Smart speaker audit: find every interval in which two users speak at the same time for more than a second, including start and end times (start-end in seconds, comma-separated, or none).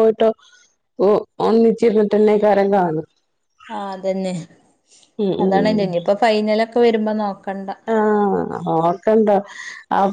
none